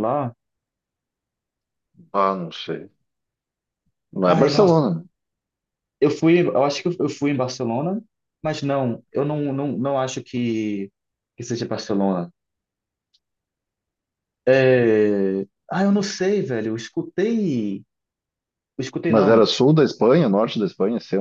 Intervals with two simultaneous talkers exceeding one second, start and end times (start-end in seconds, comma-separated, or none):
none